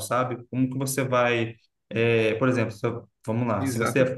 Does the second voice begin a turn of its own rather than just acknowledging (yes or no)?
yes